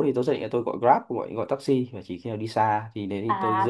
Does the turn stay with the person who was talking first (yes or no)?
no